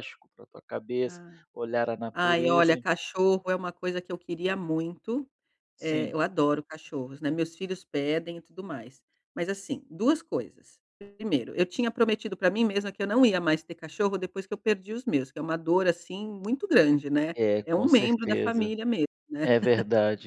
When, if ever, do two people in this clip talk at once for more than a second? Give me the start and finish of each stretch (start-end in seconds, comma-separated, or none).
17.3-18.7